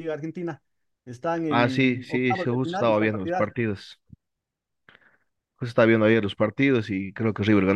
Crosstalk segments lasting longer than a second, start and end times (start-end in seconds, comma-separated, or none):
1.5-3.5